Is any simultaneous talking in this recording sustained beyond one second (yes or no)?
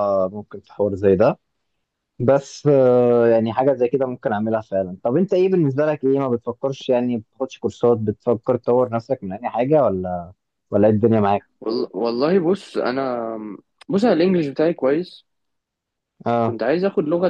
no